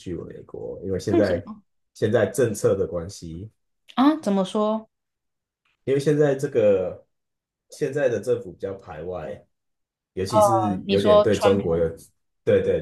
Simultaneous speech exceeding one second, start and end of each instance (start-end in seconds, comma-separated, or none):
10.5-11.9